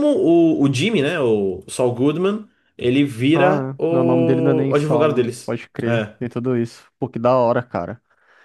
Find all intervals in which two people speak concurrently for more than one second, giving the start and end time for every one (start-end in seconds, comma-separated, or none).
3.4-6.1